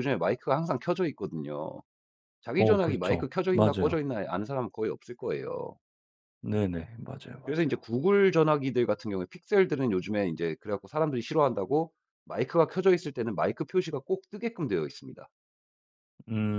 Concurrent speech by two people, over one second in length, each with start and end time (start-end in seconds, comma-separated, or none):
2.6-4.0